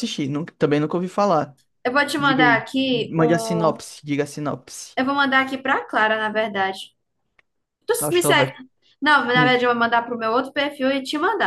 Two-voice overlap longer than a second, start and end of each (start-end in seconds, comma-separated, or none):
2.2-3.8